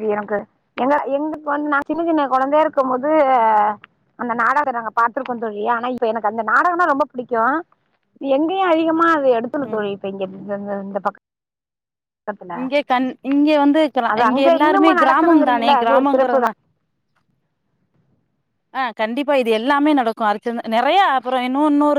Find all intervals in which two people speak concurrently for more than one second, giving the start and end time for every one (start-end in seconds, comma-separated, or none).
14.1-16.4